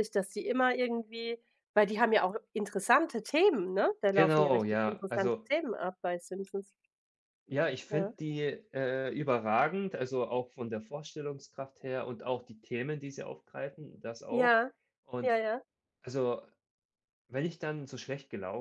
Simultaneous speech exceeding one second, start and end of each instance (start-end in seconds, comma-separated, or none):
4.1-5.5